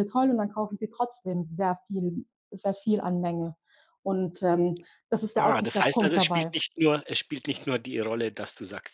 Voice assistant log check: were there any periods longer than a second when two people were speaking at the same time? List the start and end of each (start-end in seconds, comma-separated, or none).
5.3-6.6